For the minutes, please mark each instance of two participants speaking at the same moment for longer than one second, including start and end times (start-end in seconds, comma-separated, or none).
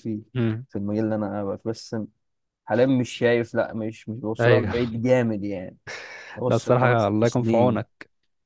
6.5-7.8